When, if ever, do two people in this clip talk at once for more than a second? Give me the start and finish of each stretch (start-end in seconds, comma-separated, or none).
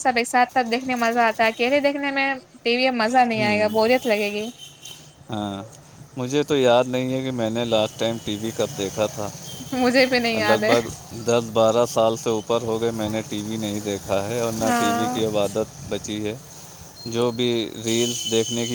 none